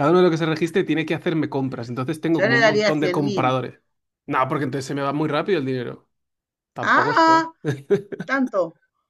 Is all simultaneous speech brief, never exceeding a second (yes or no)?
no